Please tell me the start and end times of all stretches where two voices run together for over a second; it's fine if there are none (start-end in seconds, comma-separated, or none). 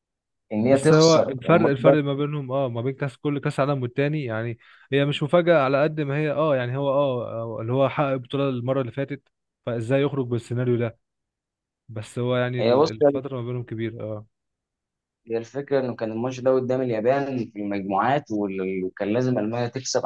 0.6-2.0